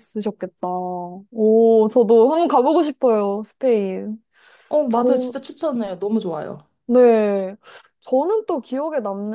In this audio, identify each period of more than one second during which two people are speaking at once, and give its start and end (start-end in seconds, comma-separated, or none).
none